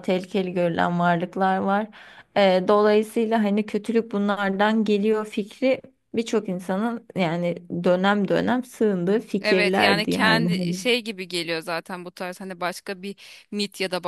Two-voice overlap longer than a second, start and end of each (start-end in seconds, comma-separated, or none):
9.4-10.8